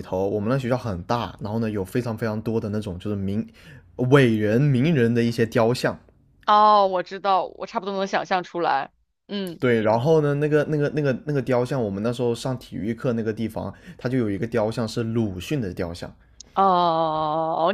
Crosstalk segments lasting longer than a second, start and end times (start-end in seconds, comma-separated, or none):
none